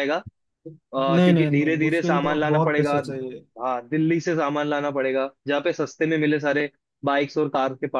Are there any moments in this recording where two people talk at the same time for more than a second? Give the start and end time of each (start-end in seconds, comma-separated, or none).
1.1-3.0